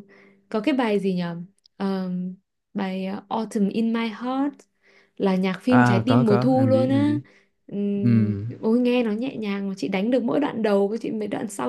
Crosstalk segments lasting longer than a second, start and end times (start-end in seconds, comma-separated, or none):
5.7-7.1